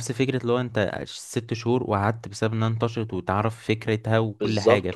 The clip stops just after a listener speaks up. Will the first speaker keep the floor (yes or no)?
no